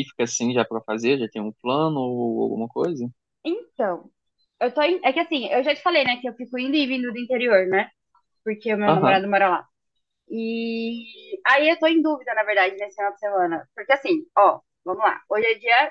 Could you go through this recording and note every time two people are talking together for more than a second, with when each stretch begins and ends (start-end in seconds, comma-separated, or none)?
none